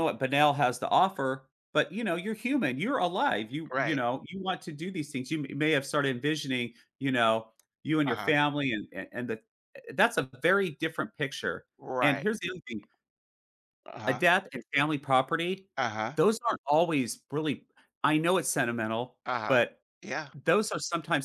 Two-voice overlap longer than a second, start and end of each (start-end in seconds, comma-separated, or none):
none